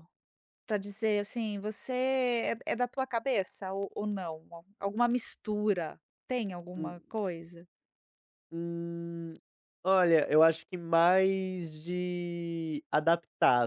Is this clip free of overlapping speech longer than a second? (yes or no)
yes